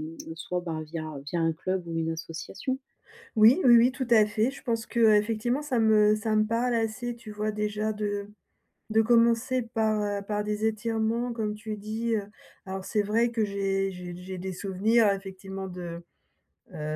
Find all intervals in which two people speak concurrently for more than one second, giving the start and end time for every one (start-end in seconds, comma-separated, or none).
none